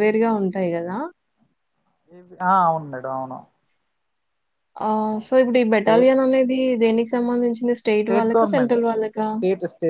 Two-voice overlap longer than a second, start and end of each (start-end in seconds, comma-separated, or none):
none